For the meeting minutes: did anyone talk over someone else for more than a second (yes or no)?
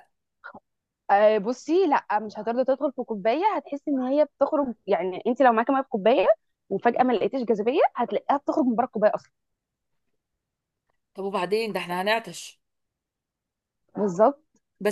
no